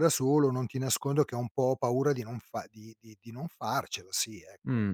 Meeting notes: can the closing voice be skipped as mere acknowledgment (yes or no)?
no